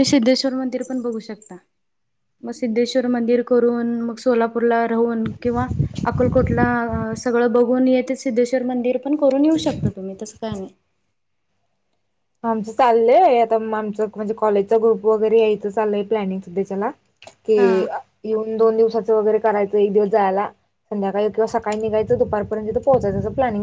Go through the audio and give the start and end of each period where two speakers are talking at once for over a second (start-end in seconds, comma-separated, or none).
none